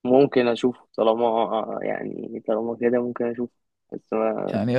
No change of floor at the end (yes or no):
no